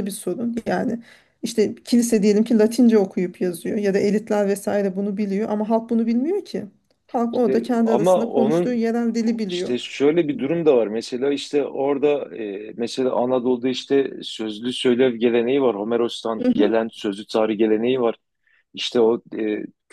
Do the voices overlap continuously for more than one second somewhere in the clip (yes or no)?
yes